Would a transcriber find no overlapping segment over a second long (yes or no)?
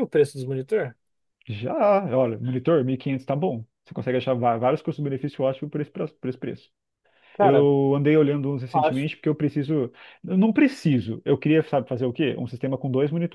yes